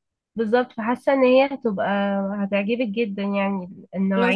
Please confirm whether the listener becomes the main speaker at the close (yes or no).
yes